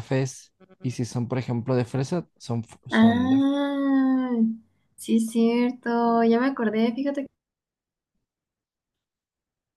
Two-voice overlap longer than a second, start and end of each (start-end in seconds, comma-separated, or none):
none